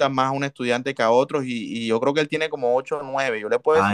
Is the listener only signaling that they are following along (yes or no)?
no